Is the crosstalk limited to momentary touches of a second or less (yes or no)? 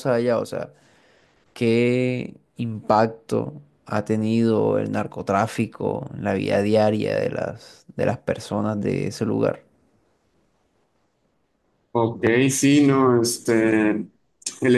yes